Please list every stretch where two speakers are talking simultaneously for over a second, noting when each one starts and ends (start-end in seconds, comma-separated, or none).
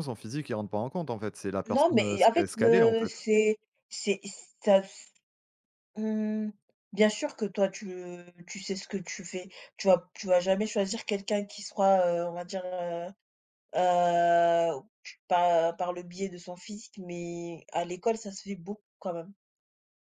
1.7-3.2